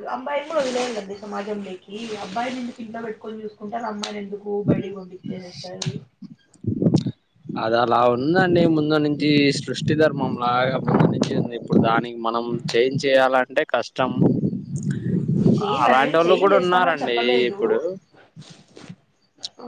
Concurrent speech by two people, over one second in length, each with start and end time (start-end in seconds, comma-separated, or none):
15.8-17.6